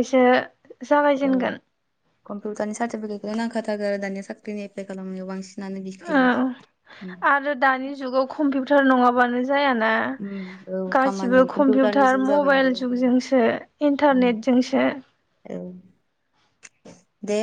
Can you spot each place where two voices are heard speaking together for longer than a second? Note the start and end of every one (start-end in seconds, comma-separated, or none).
11.0-13.2